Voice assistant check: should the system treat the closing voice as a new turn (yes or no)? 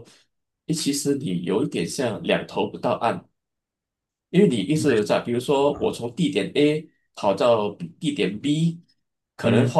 no